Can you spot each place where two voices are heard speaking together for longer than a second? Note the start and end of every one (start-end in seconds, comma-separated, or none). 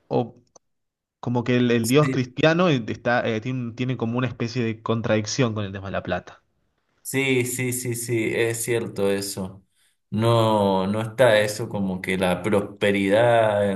none